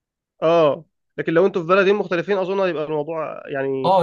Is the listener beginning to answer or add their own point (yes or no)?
yes